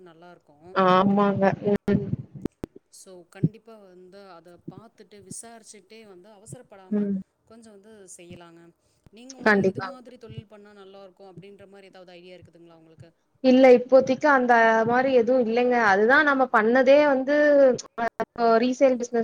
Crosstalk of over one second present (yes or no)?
no